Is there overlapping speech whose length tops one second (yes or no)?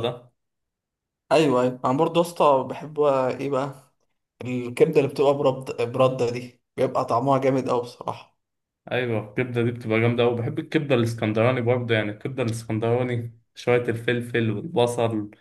no